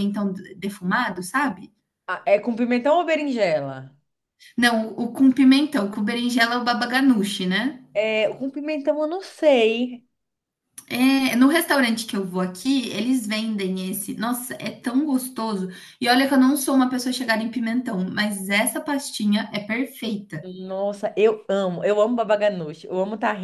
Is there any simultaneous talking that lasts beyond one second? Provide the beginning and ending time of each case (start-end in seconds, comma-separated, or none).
none